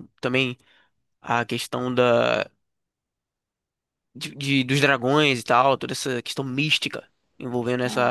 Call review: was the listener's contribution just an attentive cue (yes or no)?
no